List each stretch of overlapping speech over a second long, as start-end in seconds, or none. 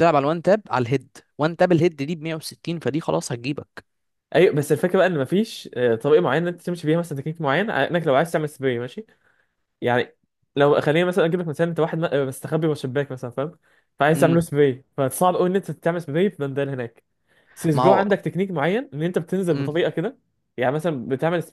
none